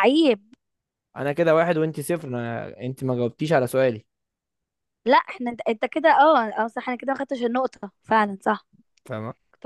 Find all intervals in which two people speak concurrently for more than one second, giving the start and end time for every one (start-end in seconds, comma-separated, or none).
none